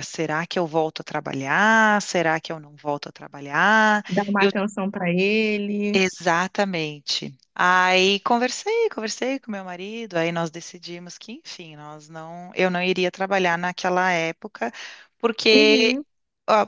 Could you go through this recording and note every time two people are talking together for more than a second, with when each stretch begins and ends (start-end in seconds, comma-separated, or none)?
none